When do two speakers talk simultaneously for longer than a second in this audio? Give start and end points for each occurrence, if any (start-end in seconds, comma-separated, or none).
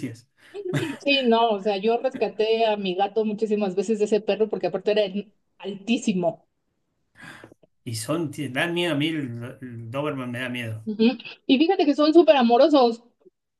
none